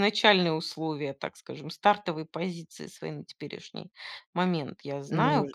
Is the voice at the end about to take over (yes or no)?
no